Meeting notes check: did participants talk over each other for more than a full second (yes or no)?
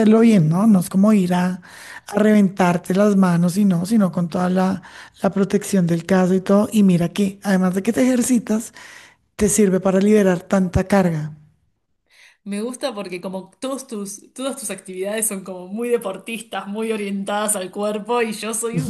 no